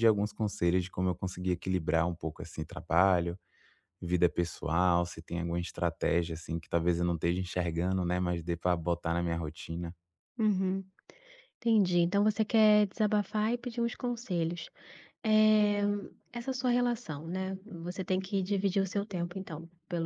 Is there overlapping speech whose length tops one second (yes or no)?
no